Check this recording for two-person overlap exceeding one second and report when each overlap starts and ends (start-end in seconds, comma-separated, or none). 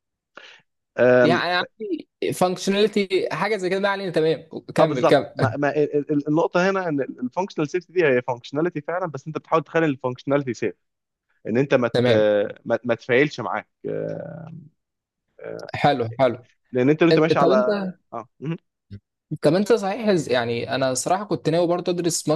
none